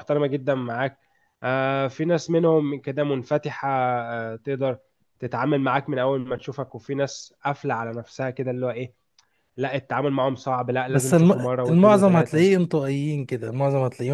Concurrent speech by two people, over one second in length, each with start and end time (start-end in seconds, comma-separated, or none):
10.9-12.5